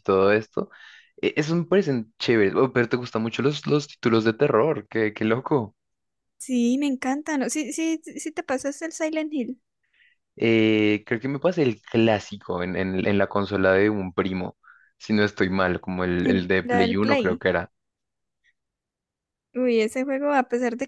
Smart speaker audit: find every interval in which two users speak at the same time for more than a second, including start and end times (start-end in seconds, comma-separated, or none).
16.2-17.4